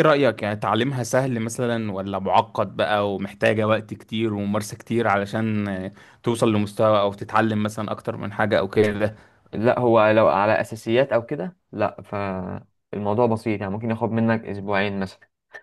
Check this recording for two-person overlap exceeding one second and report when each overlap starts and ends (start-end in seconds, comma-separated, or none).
none